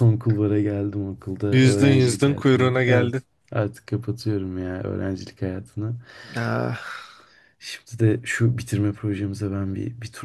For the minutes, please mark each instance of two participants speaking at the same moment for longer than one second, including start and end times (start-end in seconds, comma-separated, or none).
1.5-3.1